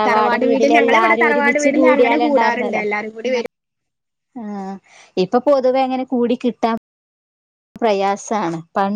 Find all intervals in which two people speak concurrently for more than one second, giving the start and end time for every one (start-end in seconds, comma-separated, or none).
0.5-2.8